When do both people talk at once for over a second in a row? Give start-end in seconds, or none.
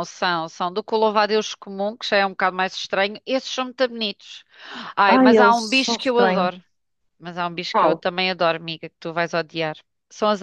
5.0-6.5